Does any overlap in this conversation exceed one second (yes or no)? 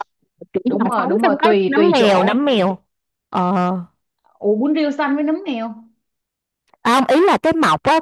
yes